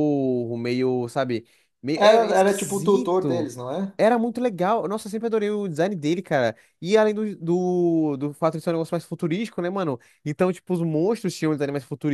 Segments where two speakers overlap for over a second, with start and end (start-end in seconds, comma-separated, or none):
1.9-3.5